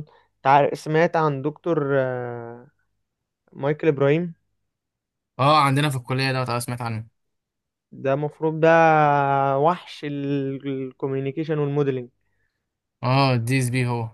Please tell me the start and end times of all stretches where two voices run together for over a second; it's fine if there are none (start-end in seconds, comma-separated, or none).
none